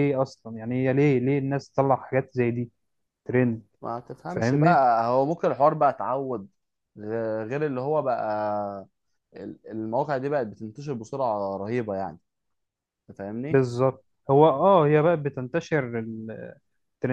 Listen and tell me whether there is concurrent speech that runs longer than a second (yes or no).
no